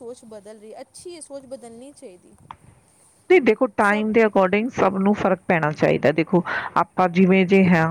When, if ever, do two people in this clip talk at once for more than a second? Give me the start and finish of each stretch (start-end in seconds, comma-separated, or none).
none